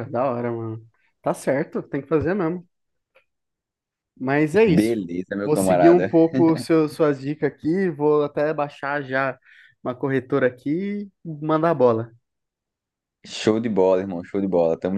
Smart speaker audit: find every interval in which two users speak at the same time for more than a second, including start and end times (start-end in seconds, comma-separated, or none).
4.7-6.1